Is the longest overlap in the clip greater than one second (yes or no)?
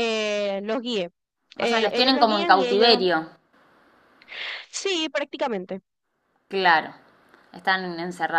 yes